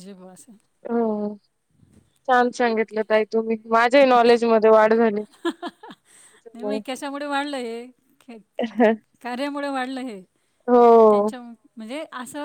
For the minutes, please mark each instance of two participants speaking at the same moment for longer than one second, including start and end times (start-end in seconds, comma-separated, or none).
none